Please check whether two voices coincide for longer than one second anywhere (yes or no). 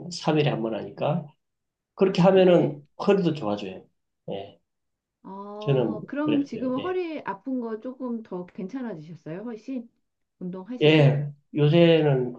yes